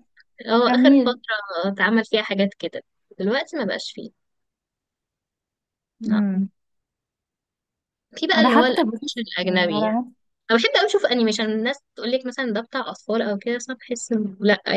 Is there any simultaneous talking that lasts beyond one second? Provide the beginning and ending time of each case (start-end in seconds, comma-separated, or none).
8.3-9.9